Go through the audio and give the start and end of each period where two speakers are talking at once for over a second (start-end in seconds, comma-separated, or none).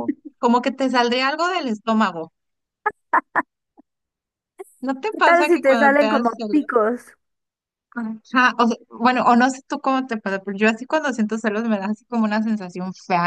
5.1-6.6